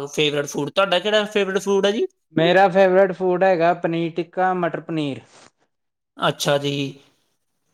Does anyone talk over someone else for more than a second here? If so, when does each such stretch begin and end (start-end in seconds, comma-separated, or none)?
none